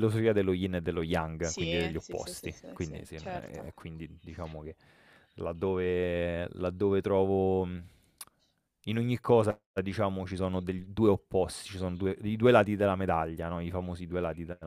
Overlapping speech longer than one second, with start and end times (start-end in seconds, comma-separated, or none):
1.4-3.7